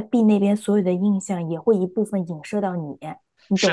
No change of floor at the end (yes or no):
no